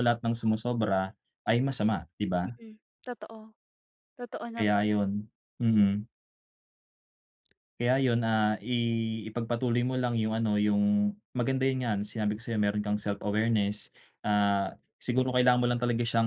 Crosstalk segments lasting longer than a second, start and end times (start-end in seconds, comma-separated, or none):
none